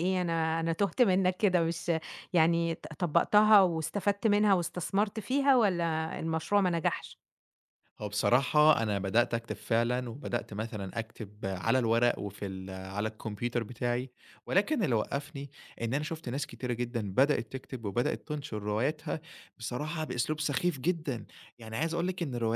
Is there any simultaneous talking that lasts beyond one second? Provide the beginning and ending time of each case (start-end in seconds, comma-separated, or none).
none